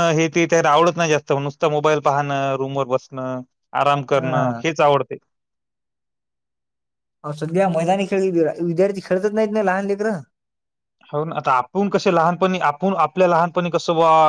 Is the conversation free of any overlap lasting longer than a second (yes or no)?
yes